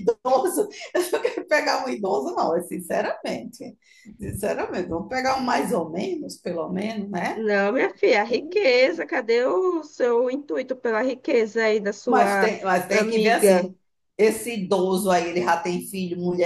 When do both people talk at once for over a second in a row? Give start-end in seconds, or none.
12.0-13.7